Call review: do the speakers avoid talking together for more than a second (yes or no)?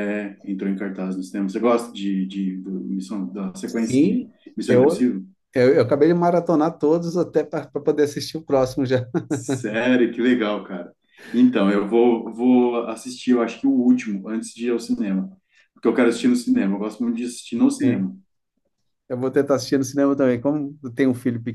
no